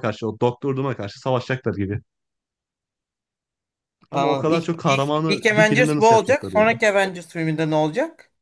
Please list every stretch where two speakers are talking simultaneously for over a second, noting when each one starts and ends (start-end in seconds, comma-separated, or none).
4.1-6.7